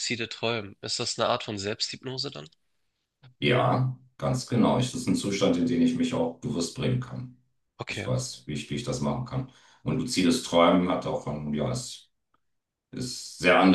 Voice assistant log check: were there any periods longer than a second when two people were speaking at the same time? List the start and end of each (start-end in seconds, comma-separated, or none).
none